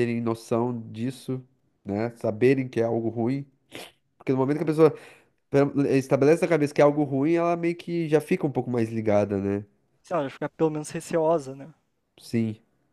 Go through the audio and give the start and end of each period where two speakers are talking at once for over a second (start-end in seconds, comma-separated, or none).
none